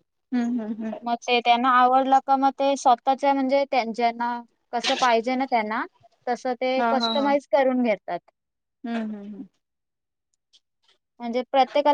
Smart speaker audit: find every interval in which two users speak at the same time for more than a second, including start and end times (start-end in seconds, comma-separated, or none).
none